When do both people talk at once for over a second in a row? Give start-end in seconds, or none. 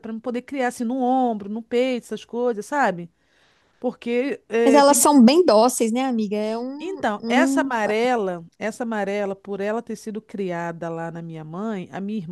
none